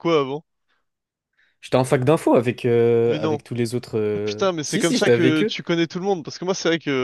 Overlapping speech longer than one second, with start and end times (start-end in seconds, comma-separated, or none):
4.1-5.5